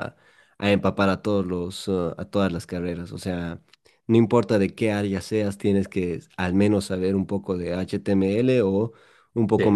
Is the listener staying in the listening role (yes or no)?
yes